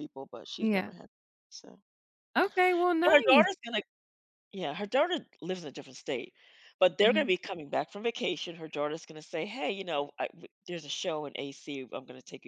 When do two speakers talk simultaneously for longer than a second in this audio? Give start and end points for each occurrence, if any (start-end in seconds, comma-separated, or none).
none